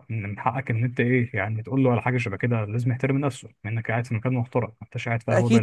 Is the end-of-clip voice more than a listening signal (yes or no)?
yes